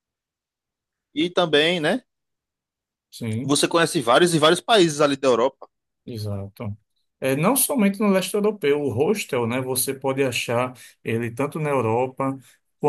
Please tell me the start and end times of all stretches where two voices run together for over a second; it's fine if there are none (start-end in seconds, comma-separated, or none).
none